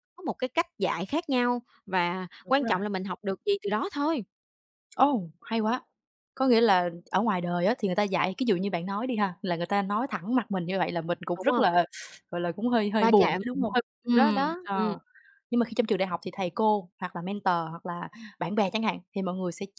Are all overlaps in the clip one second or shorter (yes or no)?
no